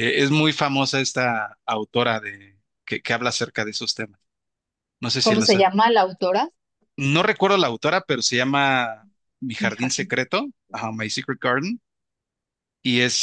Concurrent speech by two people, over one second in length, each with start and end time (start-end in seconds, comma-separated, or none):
none